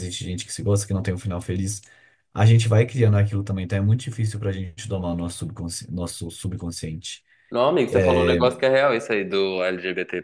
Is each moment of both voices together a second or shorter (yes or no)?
yes